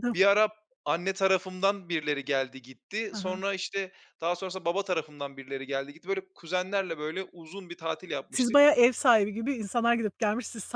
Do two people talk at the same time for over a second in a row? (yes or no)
no